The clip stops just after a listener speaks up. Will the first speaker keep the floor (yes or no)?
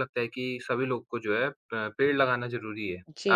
no